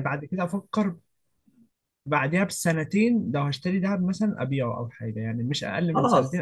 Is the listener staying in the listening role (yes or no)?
no